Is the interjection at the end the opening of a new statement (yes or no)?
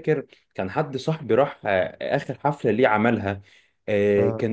no